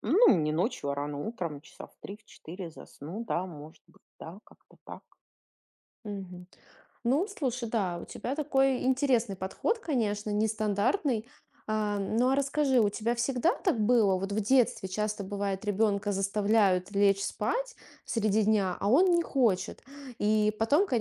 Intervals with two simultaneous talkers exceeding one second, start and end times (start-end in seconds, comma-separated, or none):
none